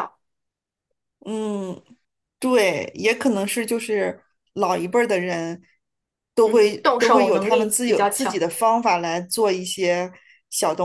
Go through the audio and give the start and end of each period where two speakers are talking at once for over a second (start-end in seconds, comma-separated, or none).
6.5-8.5